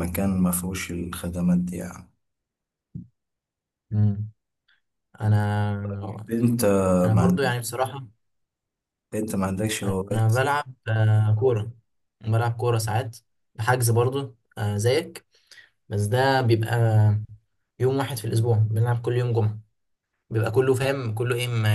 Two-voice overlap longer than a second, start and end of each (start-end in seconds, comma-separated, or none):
none